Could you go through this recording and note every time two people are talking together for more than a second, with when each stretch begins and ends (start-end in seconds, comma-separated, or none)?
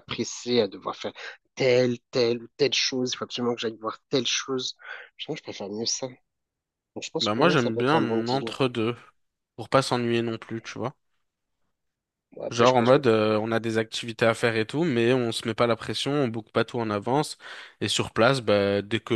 7.2-8.5